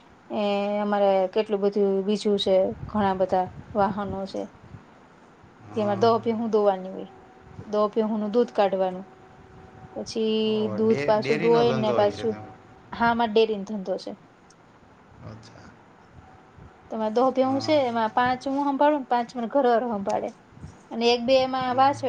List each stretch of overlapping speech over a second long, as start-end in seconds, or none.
10.5-12.3